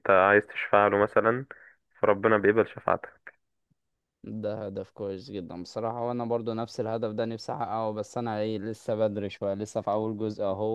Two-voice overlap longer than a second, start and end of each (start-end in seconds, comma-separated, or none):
none